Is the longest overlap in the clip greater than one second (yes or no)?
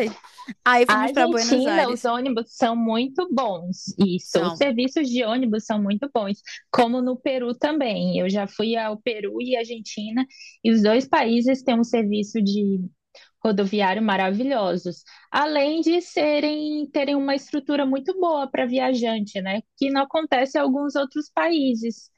yes